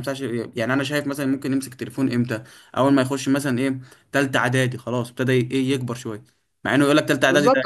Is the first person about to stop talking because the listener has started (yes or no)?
yes